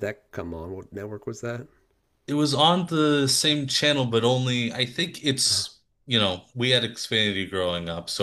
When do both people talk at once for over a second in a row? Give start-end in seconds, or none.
none